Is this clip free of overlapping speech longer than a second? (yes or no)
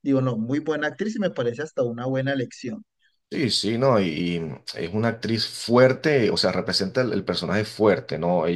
yes